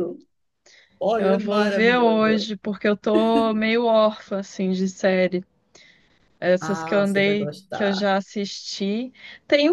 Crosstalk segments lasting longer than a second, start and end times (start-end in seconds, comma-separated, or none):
1.2-2.5, 6.6-8.1